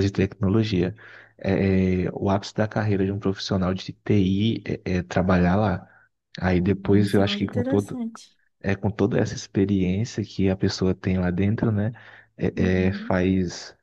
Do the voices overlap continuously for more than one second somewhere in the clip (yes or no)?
yes